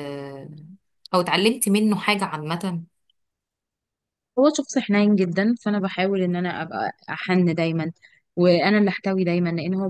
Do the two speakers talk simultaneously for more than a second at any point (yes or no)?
no